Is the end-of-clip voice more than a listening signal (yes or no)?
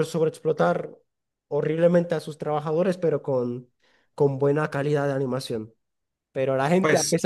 no